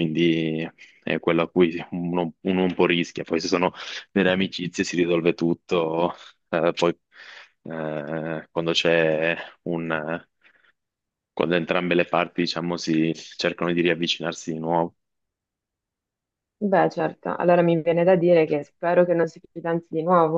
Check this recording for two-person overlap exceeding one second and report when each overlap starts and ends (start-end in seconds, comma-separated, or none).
none